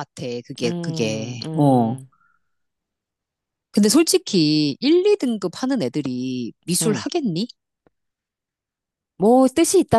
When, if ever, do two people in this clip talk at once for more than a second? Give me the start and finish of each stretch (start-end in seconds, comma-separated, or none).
0.6-2.0